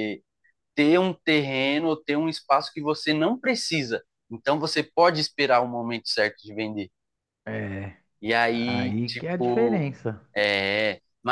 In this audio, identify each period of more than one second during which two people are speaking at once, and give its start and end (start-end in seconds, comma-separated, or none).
8.5-9.9